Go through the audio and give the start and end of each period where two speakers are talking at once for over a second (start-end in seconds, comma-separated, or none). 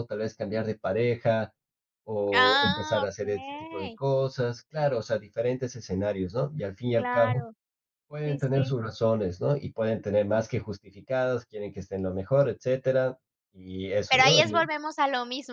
2.3-4.0